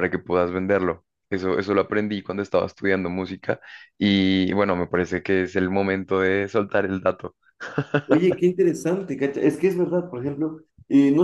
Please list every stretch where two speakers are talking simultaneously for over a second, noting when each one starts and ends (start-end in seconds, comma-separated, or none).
none